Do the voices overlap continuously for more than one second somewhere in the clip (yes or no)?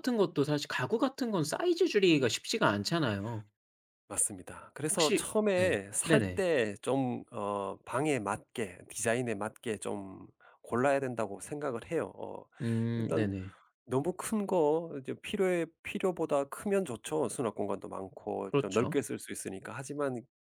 yes